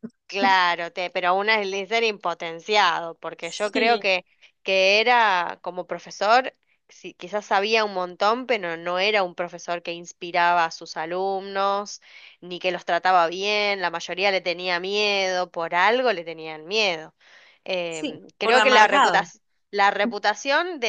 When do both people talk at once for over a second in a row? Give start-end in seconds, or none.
17.9-19.3